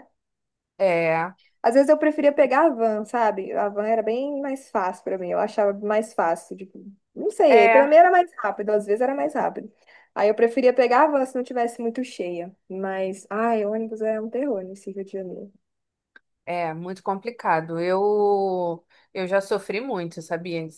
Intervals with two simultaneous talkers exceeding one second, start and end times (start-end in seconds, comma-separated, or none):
none